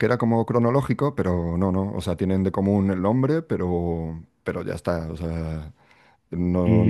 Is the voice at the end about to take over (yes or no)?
yes